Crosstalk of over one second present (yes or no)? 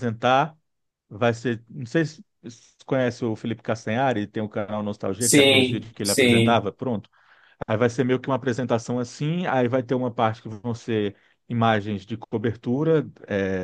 yes